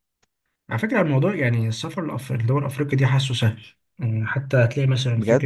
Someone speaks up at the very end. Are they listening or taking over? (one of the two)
listening